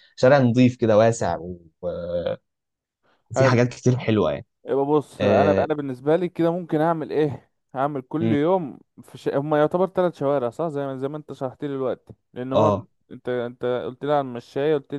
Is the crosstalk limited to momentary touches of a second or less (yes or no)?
yes